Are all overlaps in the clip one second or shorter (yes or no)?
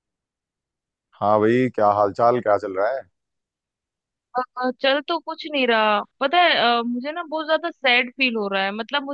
yes